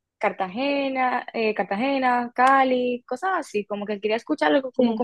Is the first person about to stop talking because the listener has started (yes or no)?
no